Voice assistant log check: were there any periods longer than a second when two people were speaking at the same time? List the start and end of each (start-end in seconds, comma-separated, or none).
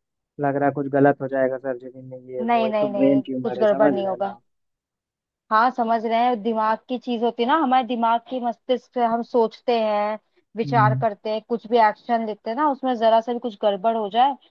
2.4-4.3